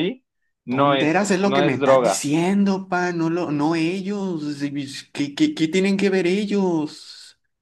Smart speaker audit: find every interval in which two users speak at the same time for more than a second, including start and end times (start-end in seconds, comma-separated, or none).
0.7-2.3